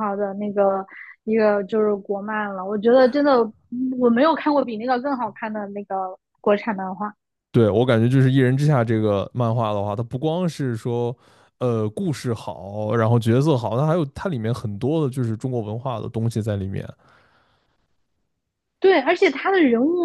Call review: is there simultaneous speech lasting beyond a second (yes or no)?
no